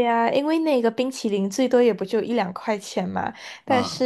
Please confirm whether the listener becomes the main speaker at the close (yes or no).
no